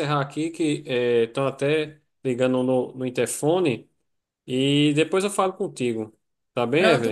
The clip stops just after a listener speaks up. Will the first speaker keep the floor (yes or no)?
no